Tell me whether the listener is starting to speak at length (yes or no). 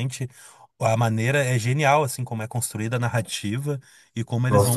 yes